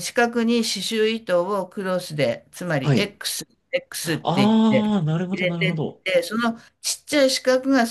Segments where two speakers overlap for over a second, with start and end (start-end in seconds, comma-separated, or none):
4.0-6.0